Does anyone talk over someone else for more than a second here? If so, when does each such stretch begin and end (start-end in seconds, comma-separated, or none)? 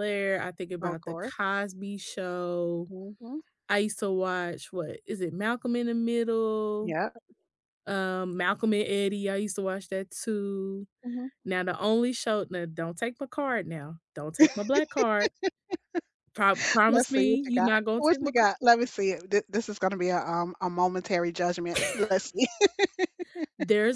16.9-18.3